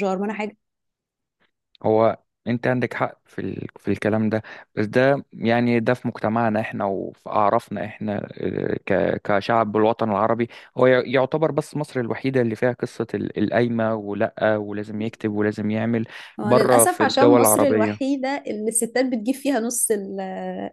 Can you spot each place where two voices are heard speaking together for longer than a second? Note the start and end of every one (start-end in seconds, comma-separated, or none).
16.4-18.1